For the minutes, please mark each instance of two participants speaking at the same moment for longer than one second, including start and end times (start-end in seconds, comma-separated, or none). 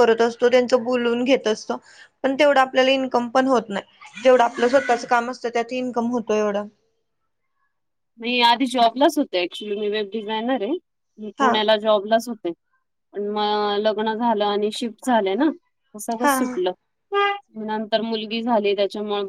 none